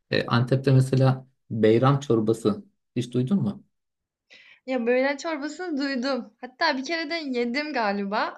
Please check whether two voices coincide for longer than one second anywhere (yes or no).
no